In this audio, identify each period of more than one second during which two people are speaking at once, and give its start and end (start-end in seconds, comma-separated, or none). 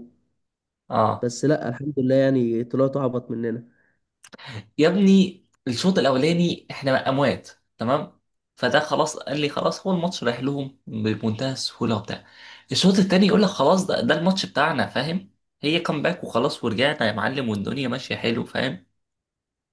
none